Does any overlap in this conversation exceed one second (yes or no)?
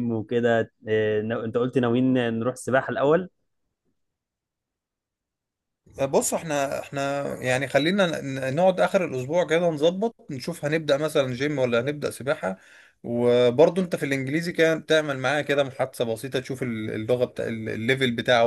no